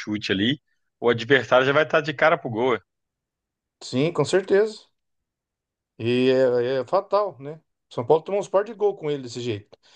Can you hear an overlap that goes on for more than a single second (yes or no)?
no